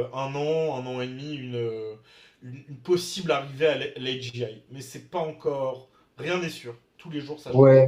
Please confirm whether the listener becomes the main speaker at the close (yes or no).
yes